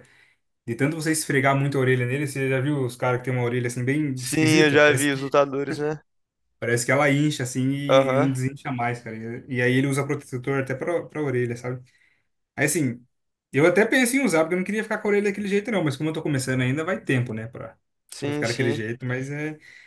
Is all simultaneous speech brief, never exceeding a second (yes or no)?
no